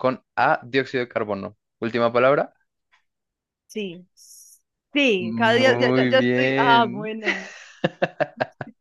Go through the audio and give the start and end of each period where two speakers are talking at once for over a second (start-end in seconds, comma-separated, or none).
5.2-7.1